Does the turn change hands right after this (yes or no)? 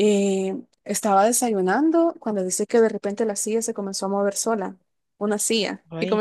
no